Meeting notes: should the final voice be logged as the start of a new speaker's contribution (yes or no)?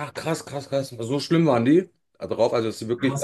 yes